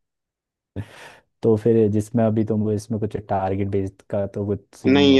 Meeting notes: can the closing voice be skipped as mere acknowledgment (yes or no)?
no